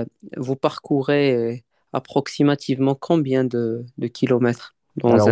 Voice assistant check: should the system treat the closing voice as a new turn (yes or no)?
yes